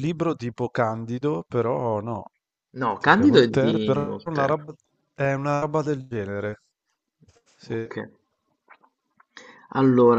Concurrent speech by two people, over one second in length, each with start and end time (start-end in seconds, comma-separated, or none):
3.0-4.7